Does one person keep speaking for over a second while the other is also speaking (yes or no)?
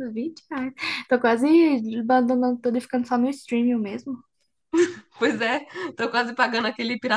no